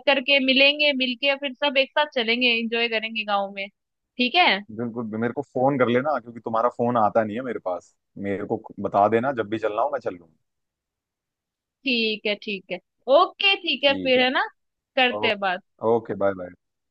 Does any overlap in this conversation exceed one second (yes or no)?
no